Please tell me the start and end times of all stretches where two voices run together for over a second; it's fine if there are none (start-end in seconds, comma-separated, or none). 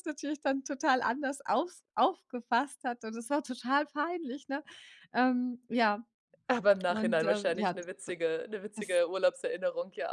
6.9-8.1